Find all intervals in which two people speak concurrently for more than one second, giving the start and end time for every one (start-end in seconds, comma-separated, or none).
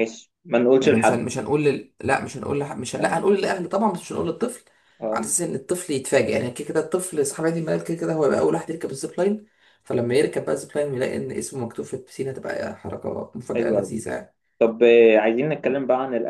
none